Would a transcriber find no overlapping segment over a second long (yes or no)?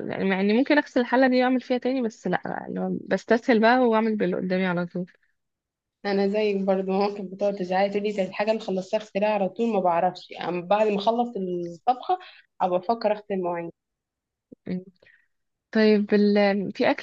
yes